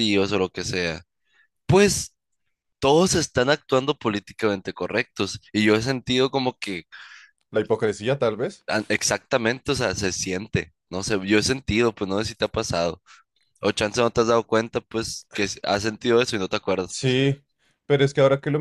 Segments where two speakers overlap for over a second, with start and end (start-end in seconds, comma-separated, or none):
none